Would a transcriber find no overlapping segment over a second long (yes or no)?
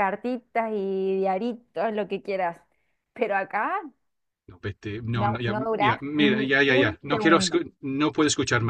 no